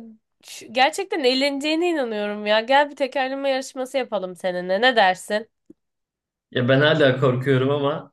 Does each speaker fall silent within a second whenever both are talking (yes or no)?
yes